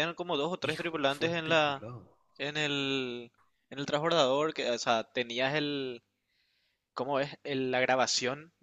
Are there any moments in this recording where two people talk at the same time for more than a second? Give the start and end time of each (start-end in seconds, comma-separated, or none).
0.6-1.8